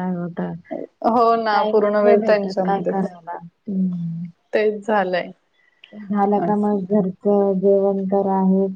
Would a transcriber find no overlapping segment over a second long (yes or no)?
no